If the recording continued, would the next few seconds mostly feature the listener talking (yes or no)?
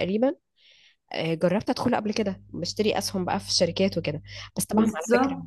no